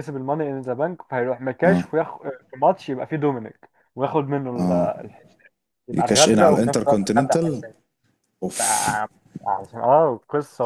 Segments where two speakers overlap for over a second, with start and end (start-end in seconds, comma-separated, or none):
5.9-7.6